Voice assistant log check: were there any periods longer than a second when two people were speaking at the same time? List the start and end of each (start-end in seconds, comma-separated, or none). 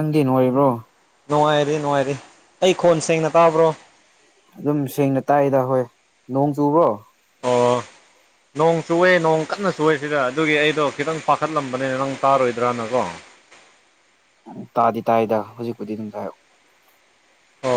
none